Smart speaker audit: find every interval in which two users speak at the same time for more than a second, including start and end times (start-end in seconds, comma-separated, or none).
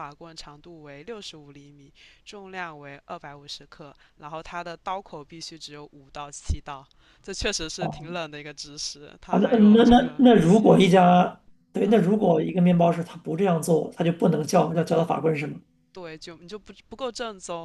9.3-11.2